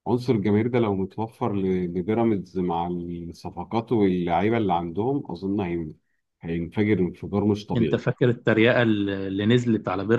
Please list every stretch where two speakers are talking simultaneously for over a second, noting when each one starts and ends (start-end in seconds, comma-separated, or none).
none